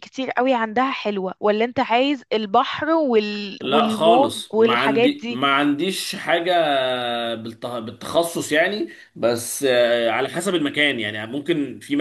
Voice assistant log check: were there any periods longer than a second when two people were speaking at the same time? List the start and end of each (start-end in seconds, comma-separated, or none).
3.6-5.4